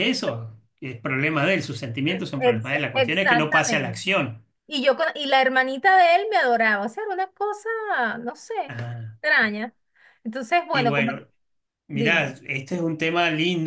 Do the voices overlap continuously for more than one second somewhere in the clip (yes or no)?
yes